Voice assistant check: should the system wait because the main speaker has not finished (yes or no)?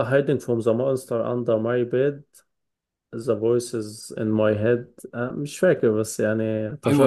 no